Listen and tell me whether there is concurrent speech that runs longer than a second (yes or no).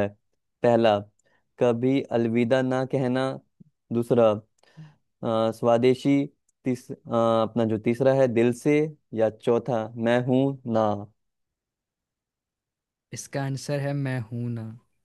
no